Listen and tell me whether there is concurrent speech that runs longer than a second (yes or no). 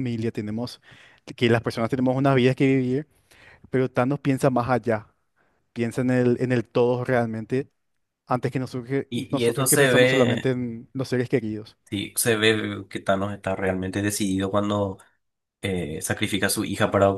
yes